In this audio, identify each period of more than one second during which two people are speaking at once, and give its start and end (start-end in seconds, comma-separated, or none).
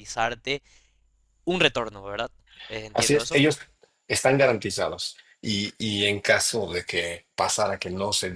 none